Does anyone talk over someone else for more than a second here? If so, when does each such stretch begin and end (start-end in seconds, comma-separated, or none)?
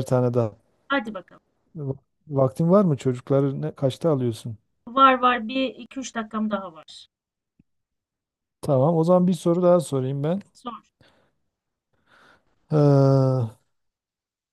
none